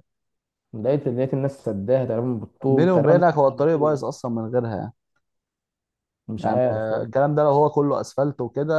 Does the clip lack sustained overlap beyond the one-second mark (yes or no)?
no